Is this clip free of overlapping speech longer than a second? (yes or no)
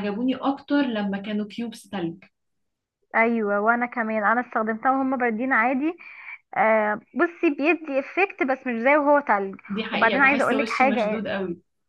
no